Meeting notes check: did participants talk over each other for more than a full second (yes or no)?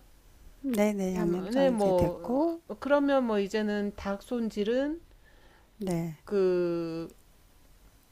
yes